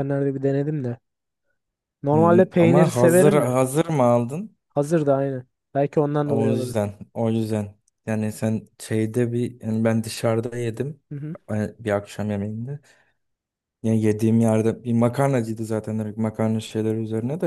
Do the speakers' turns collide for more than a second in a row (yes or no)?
yes